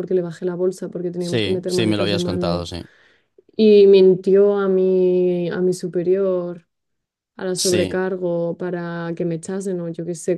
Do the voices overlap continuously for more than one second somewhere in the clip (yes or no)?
yes